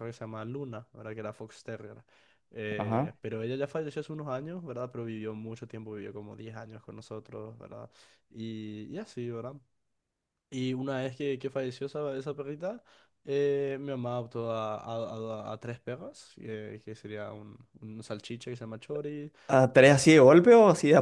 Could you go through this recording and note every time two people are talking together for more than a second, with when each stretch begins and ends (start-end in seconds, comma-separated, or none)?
none